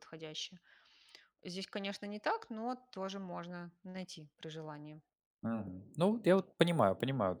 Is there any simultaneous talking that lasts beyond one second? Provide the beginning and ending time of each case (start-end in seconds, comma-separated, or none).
none